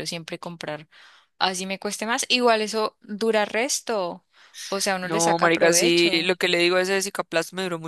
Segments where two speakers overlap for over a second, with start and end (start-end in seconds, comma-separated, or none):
5.0-6.3